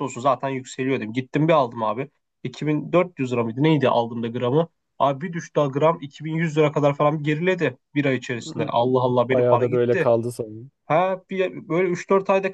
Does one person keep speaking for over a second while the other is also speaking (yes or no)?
yes